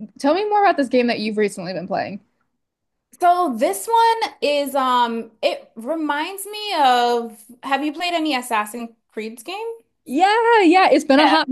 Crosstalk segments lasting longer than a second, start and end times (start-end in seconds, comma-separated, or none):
none